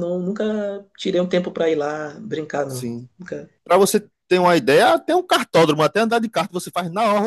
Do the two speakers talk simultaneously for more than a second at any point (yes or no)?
no